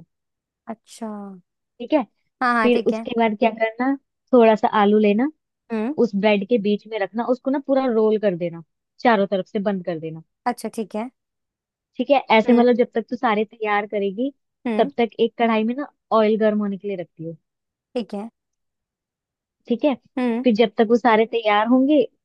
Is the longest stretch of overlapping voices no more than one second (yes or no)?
yes